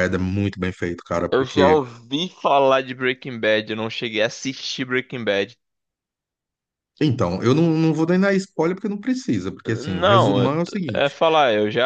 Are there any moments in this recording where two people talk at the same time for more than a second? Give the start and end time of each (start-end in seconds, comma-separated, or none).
9.7-11.2